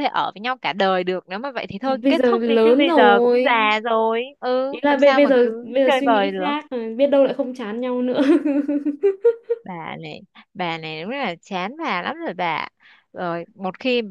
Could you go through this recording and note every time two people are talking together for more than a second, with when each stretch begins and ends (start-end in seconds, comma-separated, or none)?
1.8-3.5, 4.7-6.5